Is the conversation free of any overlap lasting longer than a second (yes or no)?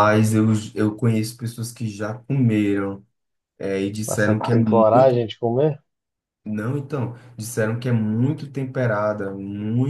no